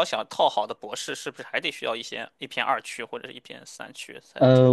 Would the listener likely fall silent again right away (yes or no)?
no